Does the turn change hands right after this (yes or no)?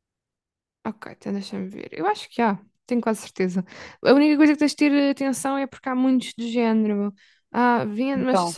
no